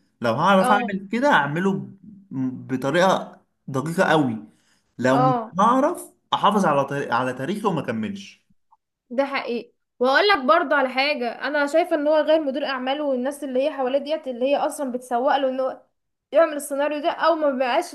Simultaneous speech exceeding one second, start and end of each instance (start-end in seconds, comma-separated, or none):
none